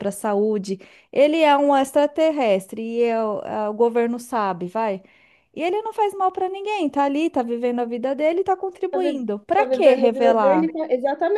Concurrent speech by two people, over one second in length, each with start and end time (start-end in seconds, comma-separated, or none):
8.9-10.7